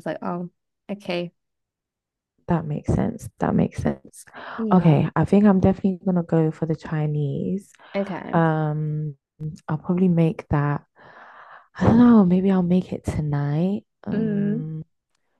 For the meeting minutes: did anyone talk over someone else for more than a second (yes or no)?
no